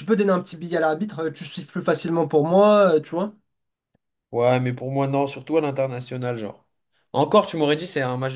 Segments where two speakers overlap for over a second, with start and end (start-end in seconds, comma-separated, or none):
none